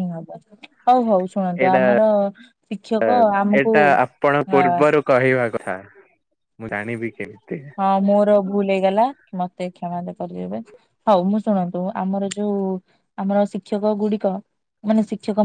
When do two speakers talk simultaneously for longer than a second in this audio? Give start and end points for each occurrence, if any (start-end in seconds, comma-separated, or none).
none